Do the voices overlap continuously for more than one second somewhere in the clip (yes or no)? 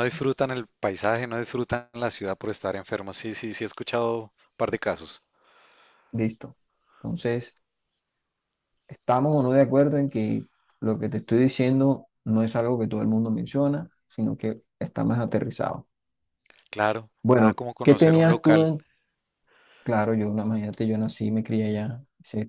yes